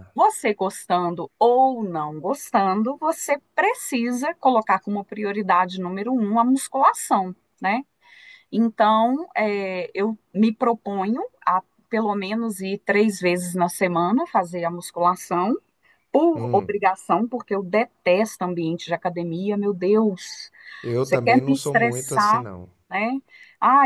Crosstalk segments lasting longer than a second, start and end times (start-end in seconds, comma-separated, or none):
21.0-22.4